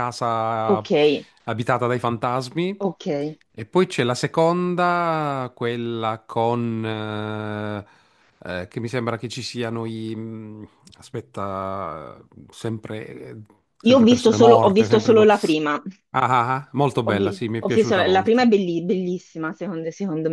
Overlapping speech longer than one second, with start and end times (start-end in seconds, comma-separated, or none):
13.9-15.3, 17.0-18.5